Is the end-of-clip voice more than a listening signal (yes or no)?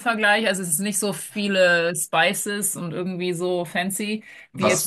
yes